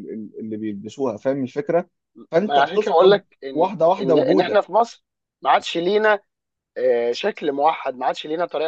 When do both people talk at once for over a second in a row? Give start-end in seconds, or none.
2.4-4.7